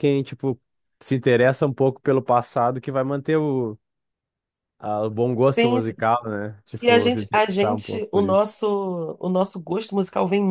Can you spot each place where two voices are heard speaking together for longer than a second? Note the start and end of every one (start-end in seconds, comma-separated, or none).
6.8-8.6